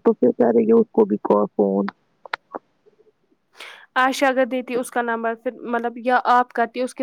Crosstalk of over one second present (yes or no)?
no